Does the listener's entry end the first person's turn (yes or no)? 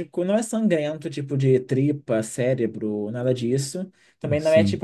no